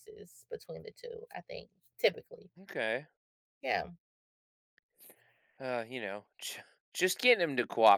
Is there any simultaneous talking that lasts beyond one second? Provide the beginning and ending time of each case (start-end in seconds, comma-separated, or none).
none